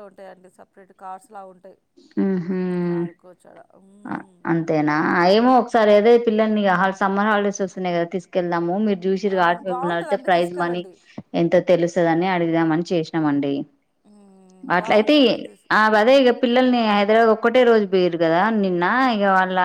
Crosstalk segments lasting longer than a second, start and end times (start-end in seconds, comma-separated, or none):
9.4-10.8